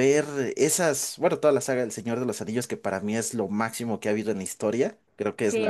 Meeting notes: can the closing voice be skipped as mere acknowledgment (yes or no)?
no